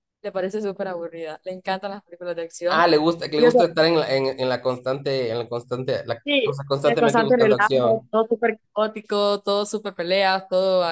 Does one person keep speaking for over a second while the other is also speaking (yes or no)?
yes